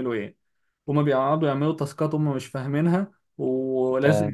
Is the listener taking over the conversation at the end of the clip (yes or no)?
no